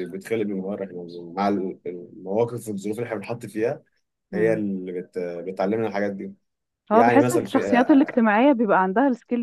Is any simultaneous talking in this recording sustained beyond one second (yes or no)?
yes